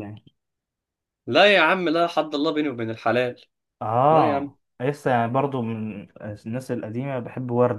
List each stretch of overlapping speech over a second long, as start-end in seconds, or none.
none